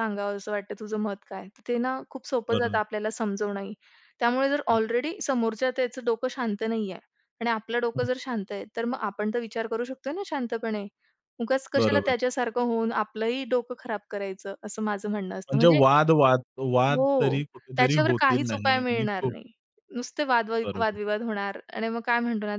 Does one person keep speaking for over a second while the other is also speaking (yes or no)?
yes